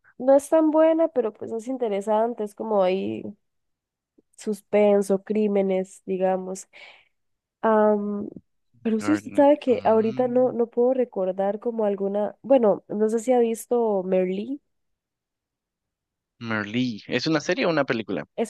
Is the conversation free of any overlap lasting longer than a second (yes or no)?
no